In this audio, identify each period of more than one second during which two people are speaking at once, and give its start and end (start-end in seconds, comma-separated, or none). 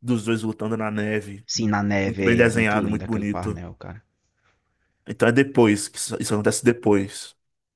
2.0-3.6